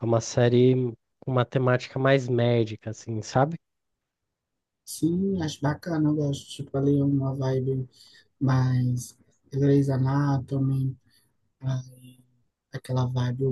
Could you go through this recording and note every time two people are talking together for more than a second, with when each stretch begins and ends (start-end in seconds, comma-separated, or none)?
none